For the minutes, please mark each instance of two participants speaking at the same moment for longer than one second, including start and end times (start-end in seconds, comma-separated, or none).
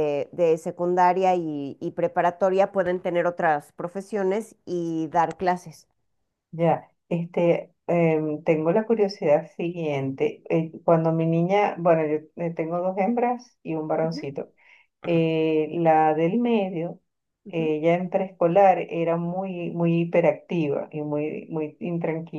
none